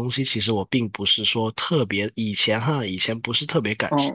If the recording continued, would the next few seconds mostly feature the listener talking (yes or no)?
no